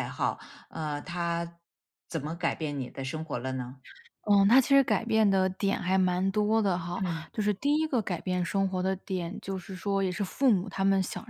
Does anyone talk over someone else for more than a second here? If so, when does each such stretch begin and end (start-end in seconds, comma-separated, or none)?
none